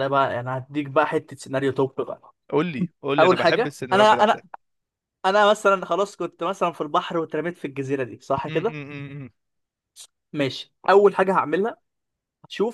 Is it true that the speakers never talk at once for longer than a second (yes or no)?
no